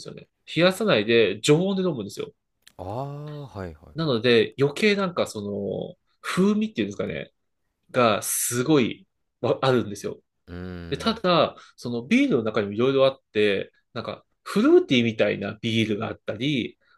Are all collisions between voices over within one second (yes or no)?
yes